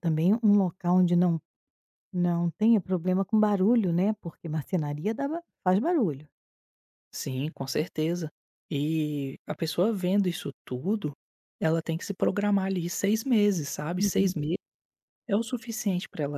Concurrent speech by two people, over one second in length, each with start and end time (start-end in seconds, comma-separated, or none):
none